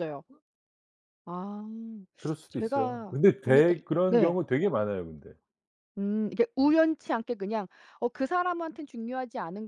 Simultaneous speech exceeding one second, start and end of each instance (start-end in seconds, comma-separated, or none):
2.5-4.4